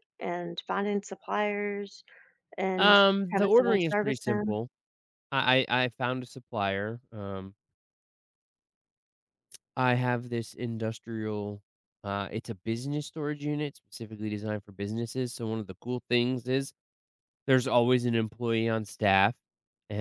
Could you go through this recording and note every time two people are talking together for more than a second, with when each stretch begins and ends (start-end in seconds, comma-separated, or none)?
2.8-4.6